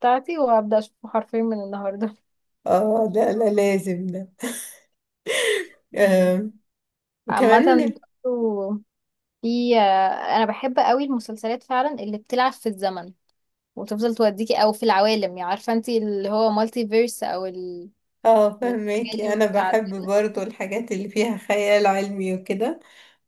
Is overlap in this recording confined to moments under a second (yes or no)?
no